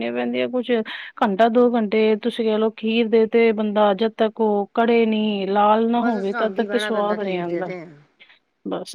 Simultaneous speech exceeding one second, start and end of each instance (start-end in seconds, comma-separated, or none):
6.0-7.6